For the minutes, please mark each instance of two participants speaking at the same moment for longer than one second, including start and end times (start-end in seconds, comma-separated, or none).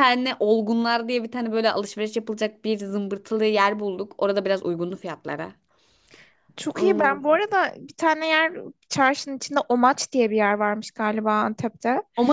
none